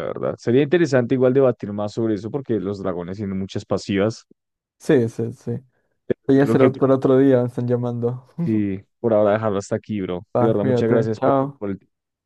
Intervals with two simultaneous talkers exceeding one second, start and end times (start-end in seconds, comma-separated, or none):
10.3-11.6